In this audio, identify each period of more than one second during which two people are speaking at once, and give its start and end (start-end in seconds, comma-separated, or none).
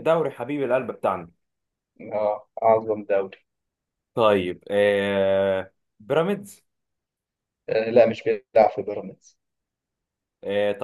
none